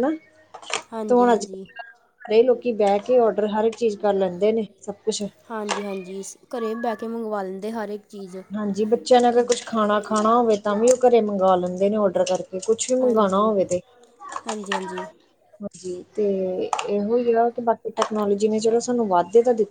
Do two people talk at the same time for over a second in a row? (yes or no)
no